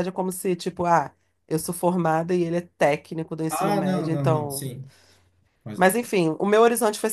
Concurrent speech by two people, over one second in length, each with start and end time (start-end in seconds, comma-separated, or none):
3.5-4.7